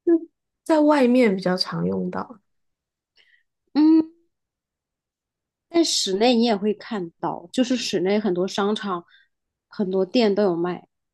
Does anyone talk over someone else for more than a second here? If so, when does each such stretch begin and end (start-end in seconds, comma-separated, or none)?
none